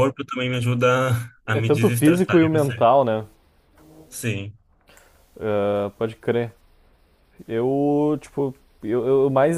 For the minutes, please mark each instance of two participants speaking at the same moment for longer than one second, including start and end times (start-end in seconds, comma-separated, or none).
1.5-2.8